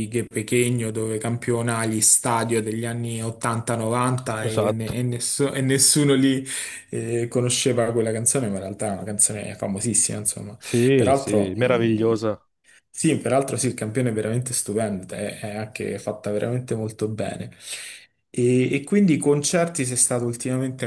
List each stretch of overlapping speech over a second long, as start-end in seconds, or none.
10.9-12.2